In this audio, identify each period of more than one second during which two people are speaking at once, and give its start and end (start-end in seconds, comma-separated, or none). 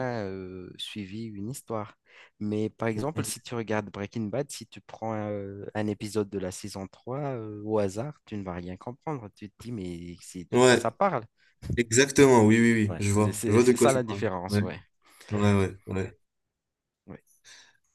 12.8-14.6